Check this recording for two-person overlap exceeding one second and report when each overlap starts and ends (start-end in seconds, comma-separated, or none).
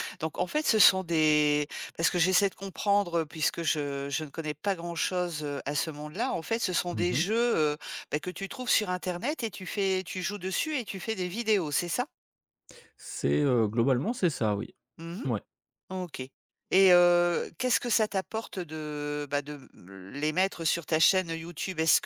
none